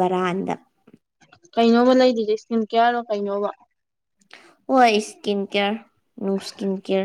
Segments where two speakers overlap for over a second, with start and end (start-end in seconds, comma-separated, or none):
none